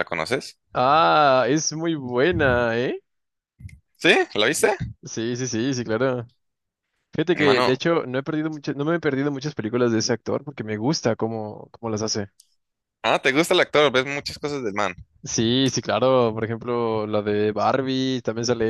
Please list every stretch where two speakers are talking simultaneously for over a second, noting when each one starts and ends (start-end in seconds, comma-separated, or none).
none